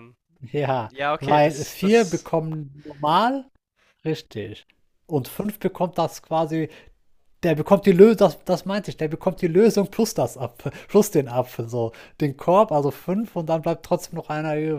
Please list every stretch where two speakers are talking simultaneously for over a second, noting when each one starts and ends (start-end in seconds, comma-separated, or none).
0.9-2.2